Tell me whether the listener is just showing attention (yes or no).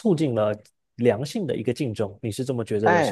no